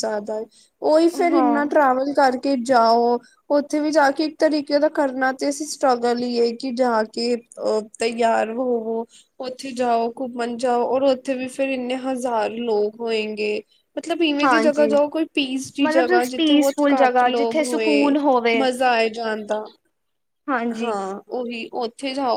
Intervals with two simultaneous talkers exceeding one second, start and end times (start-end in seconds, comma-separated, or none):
15.8-18.2